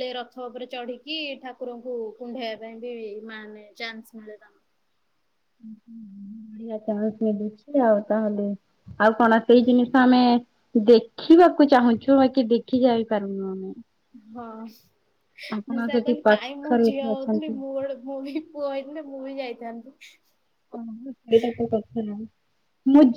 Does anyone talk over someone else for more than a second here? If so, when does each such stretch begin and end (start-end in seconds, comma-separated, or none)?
15.6-17.5